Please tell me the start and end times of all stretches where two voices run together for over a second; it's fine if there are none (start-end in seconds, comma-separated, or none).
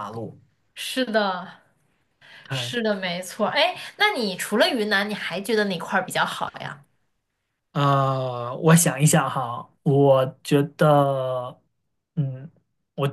none